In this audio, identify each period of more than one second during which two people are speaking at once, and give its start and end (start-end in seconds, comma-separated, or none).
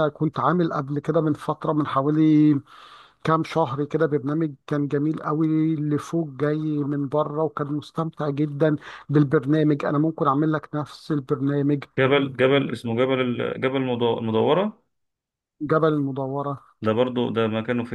none